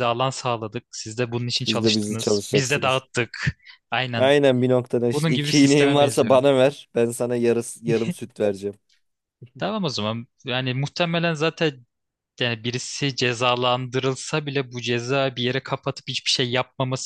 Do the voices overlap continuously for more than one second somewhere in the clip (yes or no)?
yes